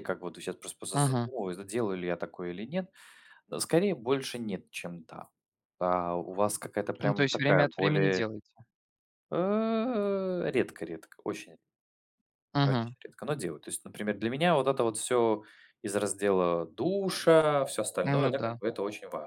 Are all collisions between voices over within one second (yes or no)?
no